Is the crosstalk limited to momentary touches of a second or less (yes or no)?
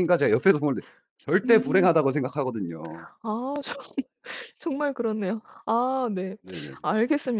yes